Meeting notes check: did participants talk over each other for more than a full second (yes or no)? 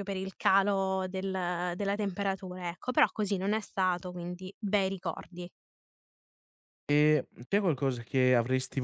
no